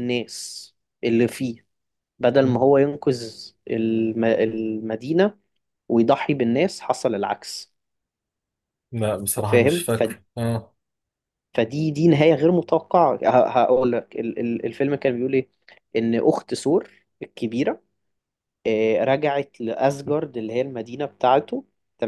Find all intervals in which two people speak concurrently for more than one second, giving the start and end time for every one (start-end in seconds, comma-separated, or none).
none